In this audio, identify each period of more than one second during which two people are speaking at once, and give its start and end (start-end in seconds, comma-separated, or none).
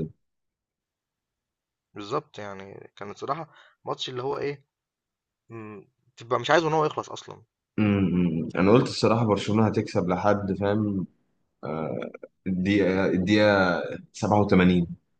none